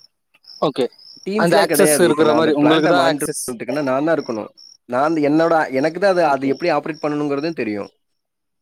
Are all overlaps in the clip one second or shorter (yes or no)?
no